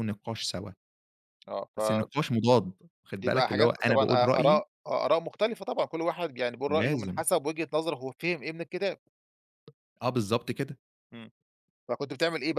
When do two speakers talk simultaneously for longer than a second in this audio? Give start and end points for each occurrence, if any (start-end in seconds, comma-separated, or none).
3.2-4.6